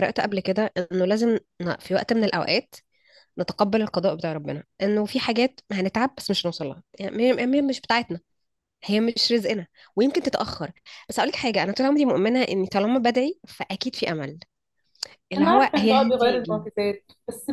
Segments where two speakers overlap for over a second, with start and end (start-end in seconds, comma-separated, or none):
15.4-16.6